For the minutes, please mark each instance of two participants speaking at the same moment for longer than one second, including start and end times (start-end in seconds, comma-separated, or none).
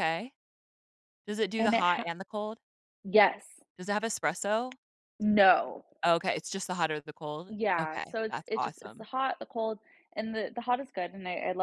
7.5-9.1